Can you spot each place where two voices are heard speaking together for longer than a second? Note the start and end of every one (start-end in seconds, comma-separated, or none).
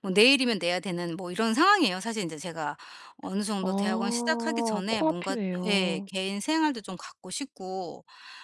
3.6-6.1